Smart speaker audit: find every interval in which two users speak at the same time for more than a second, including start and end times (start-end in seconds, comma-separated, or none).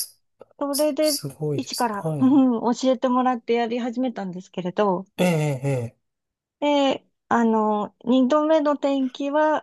0.7-2.4